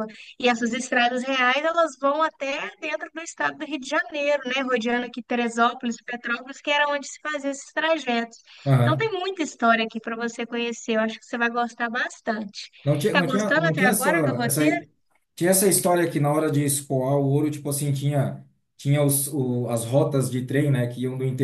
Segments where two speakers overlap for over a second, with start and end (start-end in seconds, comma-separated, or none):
13.1-14.6